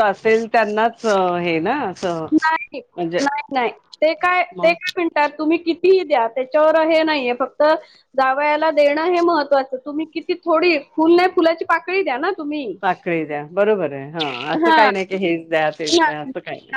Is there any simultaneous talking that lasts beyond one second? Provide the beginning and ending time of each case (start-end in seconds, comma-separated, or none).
none